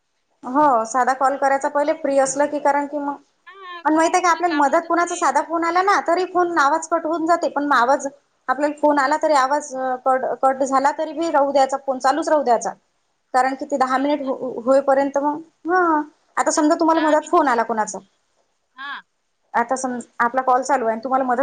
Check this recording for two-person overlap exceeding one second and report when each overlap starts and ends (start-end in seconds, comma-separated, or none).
3.8-5.2